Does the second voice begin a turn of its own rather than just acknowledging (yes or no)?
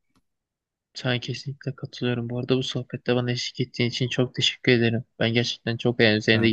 no